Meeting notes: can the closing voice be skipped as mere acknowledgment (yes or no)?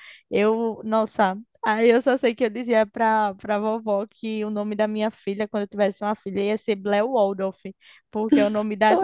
yes